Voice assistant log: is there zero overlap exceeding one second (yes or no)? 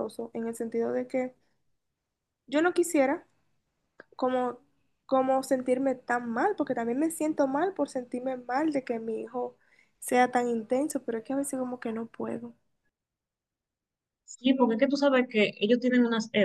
yes